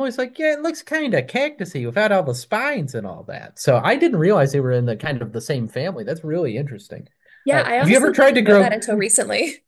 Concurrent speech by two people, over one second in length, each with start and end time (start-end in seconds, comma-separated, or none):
7.5-8.8